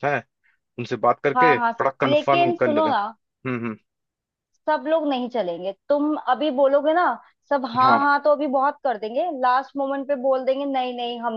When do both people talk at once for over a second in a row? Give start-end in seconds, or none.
1.4-3.0